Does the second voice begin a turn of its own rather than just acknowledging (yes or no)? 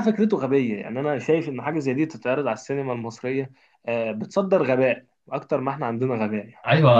yes